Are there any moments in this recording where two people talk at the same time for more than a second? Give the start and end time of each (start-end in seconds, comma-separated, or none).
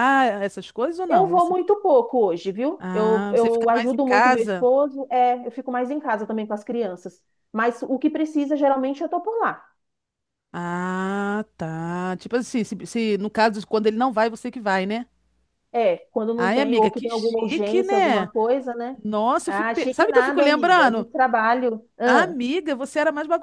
2.8-4.7, 16.4-18.3, 19.5-21.1